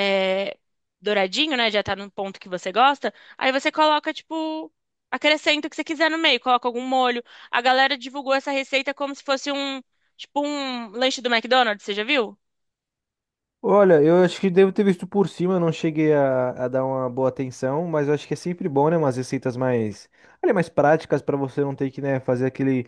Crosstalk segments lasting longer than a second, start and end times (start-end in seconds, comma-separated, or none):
none